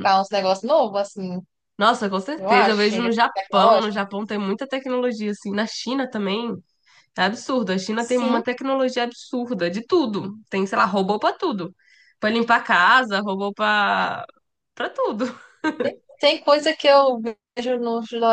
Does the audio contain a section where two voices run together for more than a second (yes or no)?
yes